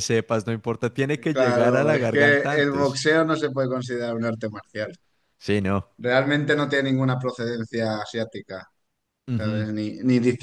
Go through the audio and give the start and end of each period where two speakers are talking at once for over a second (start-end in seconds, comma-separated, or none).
1.3-3.0